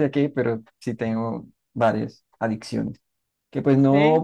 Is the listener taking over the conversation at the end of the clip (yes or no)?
no